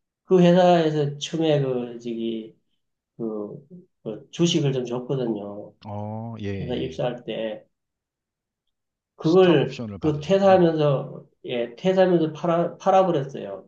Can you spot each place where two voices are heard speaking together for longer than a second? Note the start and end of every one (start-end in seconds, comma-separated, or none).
9.2-10.7